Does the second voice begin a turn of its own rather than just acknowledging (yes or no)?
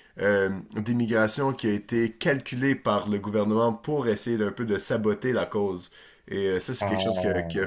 no